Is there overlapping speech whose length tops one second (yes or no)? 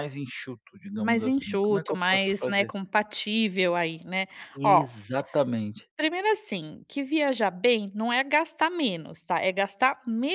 yes